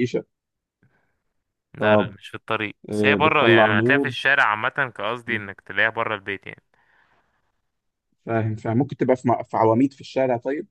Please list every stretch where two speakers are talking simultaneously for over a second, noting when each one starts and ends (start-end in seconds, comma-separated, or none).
2.9-4.1